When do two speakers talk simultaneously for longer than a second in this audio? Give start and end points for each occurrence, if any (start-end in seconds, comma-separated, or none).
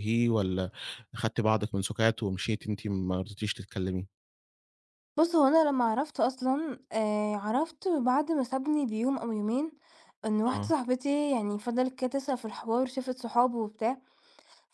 none